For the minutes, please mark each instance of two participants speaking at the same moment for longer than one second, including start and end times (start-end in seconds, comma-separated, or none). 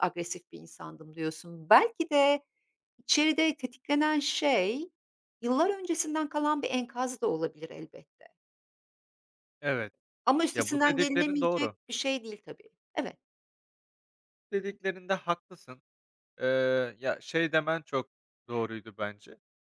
10.5-11.8